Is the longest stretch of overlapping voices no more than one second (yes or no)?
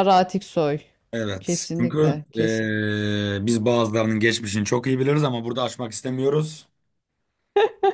no